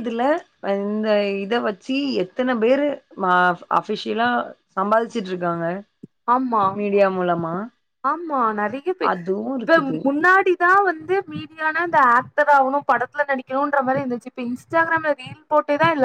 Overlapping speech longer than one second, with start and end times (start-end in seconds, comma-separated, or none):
none